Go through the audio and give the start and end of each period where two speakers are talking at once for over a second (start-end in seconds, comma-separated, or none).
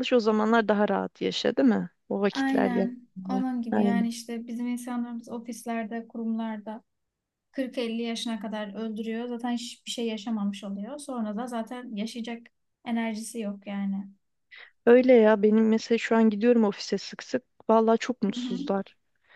2.3-4.1